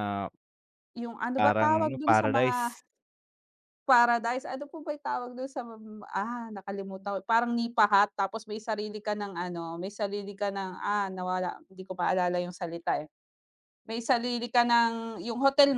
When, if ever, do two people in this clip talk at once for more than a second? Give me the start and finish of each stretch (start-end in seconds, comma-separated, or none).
1.4-2.7